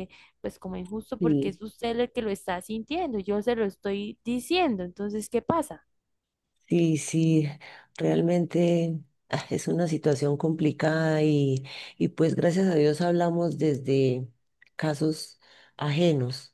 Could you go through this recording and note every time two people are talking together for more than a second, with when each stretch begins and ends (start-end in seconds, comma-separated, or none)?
none